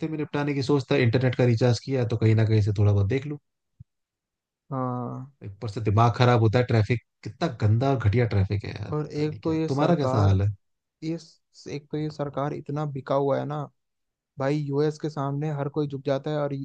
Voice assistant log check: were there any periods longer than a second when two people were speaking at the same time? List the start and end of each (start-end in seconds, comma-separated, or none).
8.9-10.4